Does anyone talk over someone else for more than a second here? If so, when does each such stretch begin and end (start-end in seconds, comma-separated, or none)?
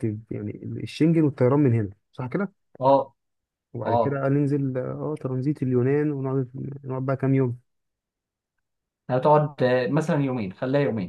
none